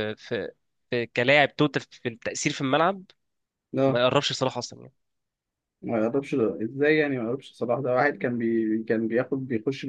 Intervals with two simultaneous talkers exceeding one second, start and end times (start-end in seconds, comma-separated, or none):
none